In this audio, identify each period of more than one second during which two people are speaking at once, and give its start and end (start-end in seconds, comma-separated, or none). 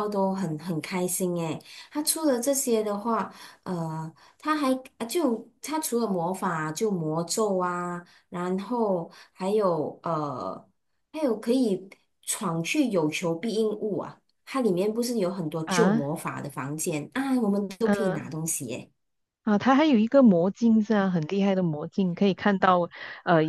none